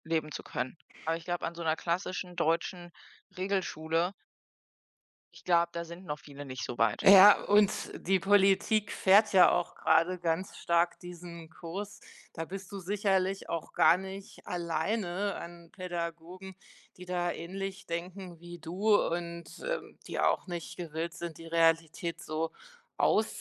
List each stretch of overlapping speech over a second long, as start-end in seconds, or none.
none